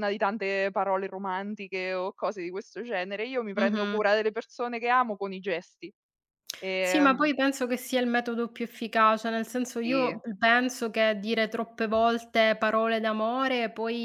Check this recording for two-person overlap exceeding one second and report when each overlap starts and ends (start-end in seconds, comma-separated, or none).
none